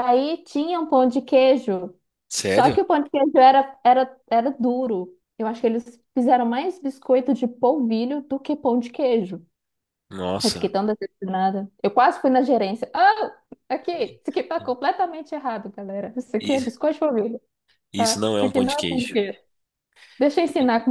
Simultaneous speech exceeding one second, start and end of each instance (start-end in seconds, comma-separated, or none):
17.9-19.2